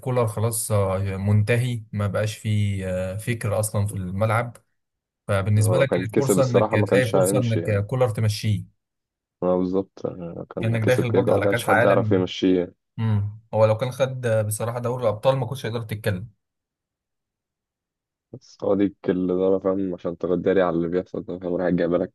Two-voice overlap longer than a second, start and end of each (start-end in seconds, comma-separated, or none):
5.6-7.8, 10.6-12.2